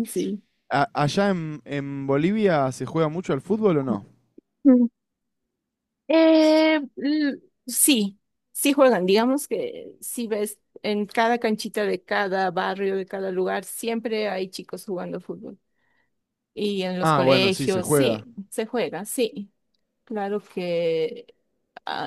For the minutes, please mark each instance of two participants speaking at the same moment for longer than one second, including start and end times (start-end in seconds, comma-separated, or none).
17.0-18.2